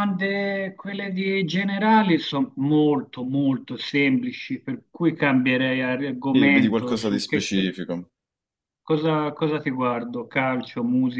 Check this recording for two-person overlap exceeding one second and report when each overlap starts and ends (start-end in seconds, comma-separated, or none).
6.3-7.7